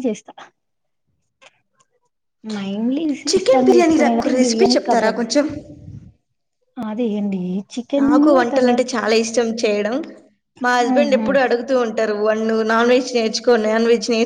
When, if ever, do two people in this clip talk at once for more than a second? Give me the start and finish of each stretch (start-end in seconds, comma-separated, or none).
3.3-5.2